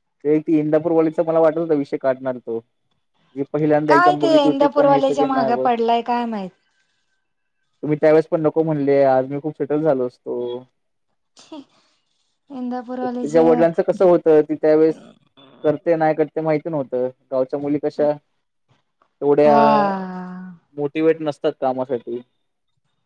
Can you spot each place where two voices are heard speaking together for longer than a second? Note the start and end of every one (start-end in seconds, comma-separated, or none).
3.9-5.7